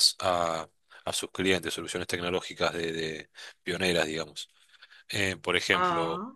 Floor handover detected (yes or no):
no